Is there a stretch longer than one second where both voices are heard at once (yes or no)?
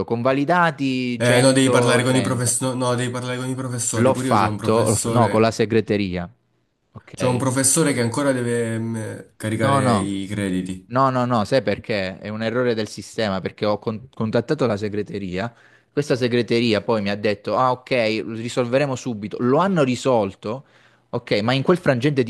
yes